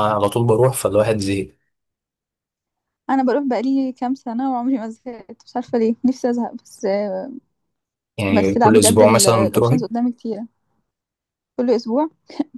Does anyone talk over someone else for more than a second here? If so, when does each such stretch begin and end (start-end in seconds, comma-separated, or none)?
8.3-9.8